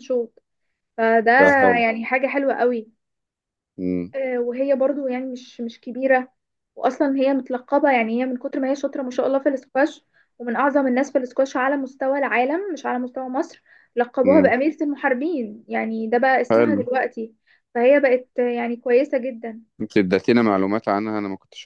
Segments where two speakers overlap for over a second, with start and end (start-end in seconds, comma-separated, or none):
none